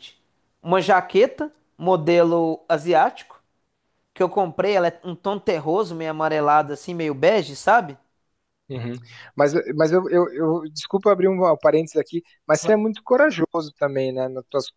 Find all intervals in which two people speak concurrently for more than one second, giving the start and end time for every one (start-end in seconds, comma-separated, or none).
none